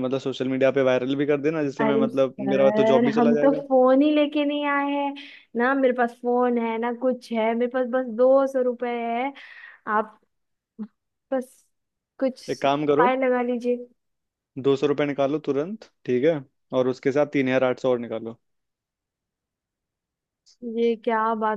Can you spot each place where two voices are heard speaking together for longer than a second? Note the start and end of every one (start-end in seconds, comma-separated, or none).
1.8-3.6